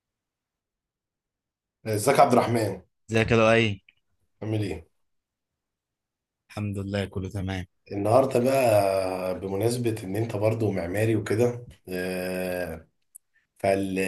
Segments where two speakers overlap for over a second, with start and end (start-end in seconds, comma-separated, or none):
none